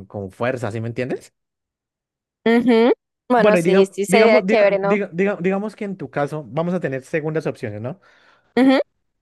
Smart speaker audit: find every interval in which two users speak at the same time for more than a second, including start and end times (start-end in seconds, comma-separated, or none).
3.4-5.0